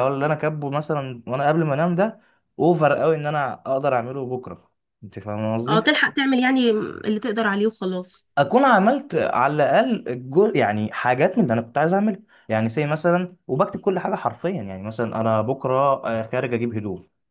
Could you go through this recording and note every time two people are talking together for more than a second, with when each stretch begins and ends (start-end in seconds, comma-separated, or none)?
none